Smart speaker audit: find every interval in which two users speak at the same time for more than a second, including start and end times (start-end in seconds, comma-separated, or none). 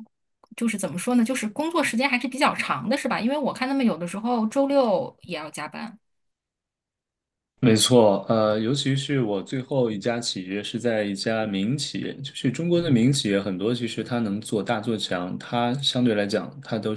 none